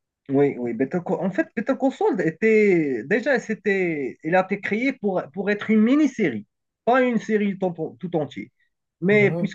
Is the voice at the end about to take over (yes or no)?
no